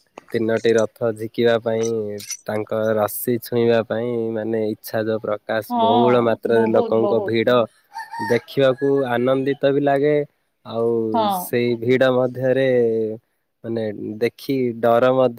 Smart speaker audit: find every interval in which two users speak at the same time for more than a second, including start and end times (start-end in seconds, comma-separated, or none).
5.7-7.3